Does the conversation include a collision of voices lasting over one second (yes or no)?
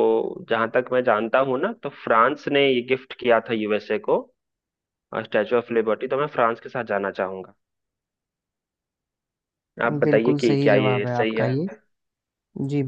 yes